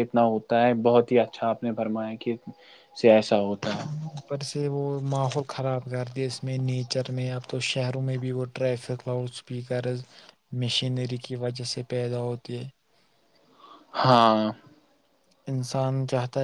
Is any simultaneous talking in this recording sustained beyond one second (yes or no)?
no